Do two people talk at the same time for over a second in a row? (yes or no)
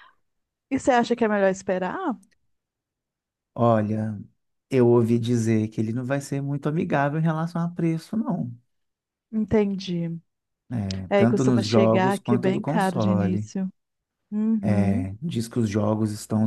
yes